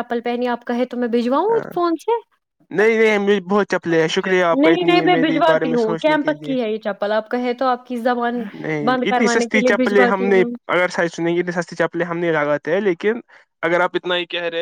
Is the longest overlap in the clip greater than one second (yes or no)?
yes